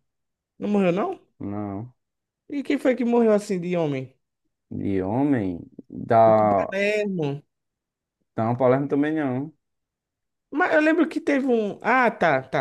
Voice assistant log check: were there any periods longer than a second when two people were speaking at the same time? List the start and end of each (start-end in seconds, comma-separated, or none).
none